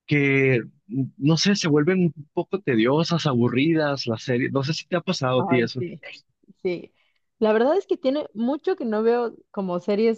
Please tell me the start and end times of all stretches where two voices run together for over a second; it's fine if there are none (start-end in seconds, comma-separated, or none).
none